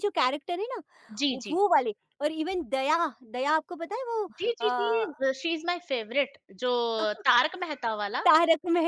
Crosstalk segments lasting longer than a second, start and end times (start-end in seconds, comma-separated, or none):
none